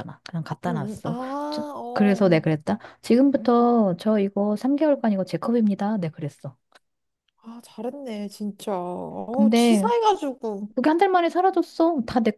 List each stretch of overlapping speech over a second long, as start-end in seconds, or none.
0.7-2.4